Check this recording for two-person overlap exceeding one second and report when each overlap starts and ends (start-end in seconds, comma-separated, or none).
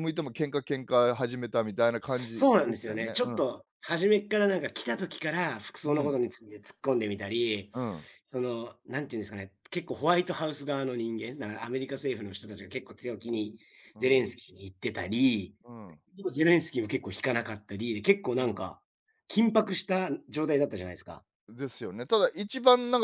2.0-3.4